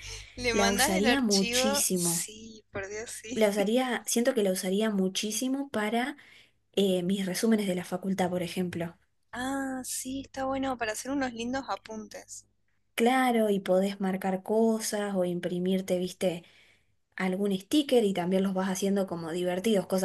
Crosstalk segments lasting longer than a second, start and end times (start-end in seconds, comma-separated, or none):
0.5-2.3